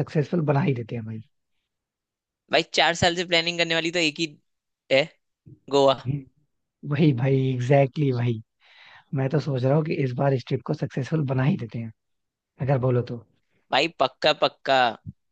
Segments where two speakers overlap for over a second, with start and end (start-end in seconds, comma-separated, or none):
none